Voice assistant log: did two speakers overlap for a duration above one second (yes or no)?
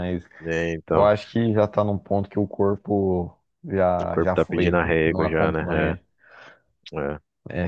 yes